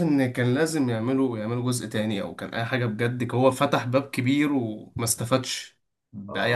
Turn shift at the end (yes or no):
yes